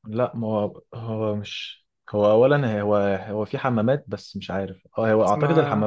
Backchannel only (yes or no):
yes